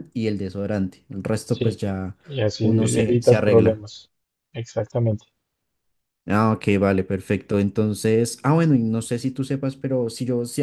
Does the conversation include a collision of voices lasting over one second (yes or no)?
yes